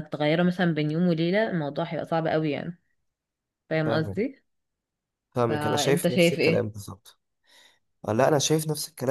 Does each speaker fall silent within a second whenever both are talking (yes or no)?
no